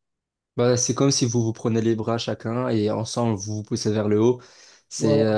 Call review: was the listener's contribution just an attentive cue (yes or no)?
yes